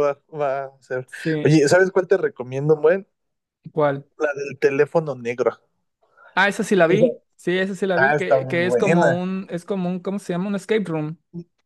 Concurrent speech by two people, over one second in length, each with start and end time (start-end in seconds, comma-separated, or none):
8.0-9.2